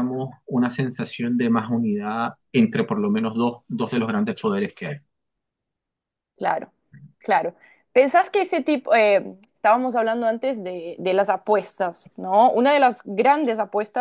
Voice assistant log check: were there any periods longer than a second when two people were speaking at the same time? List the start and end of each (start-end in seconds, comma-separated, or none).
none